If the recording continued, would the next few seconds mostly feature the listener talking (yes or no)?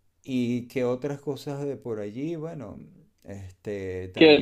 yes